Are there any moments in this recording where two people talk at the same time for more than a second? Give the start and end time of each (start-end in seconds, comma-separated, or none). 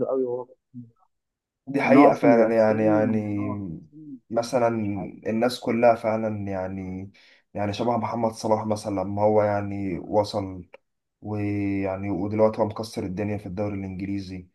1.8-3.1